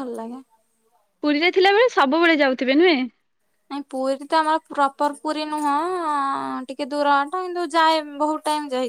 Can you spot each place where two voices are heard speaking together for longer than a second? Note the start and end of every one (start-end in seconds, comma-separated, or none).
none